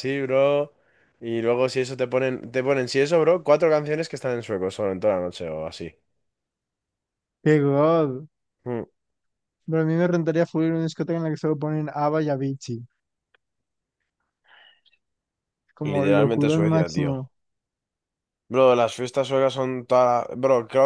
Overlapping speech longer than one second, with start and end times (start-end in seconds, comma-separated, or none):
15.8-17.2